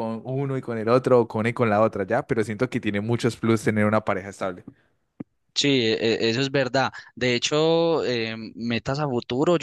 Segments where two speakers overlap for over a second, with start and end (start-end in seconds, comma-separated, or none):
none